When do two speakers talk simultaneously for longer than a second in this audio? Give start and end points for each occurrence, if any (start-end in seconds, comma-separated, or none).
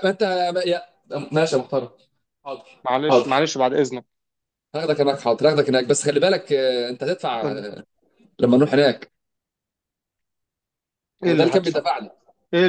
none